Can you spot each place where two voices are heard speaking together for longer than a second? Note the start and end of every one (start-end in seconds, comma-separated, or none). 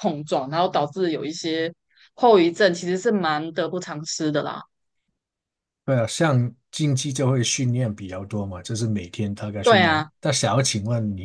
none